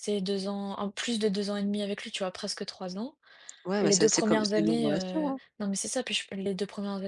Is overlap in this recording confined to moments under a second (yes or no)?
no